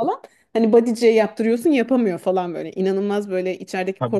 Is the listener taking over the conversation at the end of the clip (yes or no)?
no